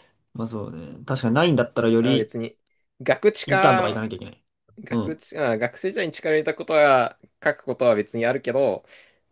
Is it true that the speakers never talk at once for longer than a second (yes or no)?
yes